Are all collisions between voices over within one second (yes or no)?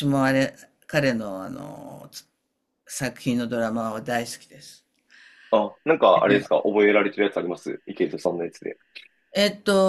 yes